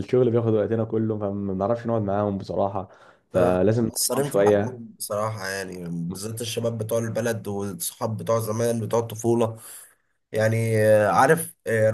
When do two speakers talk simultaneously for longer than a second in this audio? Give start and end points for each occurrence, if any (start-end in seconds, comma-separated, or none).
3.3-4.8